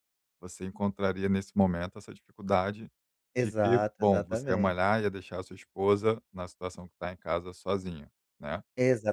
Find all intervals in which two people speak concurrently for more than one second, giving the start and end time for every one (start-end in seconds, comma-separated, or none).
3.4-4.8